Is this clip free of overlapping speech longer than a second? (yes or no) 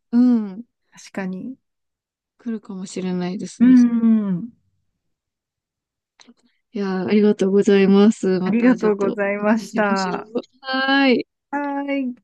no